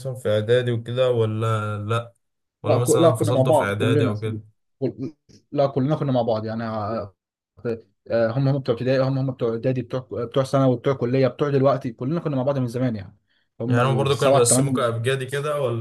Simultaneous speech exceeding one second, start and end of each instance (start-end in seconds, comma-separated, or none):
2.6-4.1, 13.7-14.9